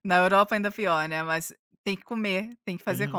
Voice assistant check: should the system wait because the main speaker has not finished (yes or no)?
no